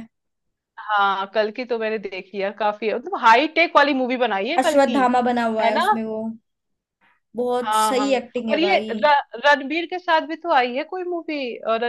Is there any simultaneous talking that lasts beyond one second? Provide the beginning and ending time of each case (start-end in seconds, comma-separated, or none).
7.6-8.9